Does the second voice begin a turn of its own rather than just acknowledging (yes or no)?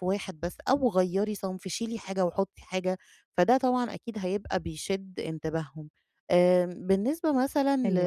no